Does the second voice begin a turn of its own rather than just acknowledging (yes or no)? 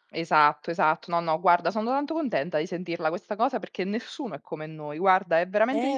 yes